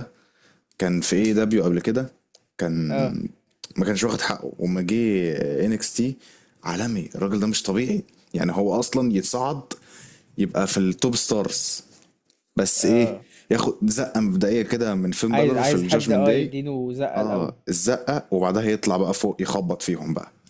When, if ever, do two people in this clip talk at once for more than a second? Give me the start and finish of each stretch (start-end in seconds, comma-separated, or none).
15.3-16.5